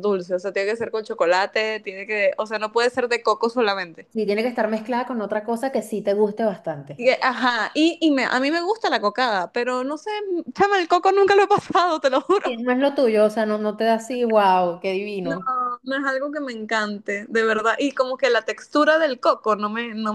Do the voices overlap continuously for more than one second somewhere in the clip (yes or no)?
no